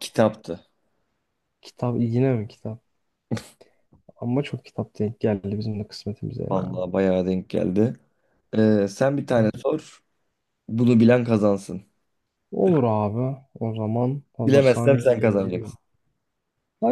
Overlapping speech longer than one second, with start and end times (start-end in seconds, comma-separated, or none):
14.4-15.7